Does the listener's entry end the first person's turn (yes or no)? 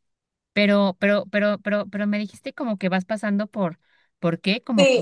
yes